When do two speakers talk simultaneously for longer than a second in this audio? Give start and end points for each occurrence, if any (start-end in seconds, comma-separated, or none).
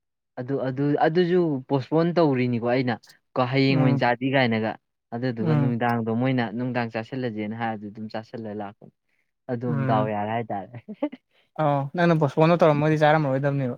none